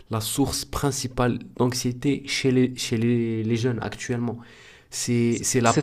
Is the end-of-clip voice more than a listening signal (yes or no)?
yes